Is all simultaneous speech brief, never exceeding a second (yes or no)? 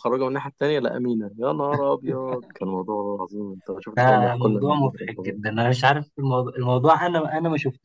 no